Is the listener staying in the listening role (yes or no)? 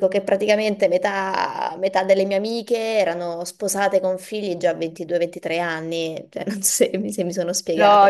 no